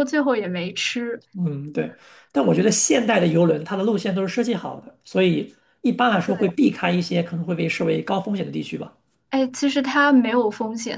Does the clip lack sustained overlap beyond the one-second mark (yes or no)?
yes